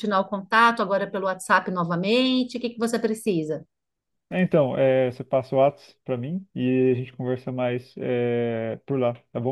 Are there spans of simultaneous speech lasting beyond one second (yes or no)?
no